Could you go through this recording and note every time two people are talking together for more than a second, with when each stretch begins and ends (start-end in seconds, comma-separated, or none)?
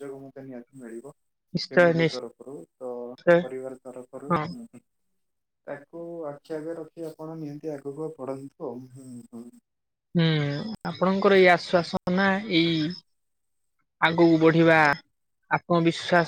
none